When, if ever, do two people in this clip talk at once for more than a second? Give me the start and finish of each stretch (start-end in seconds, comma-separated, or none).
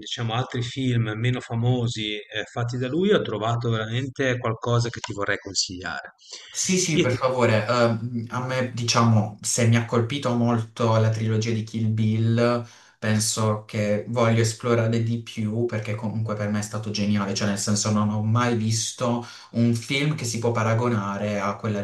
none